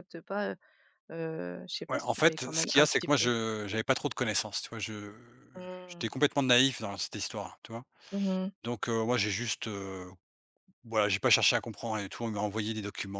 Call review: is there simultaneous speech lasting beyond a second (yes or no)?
yes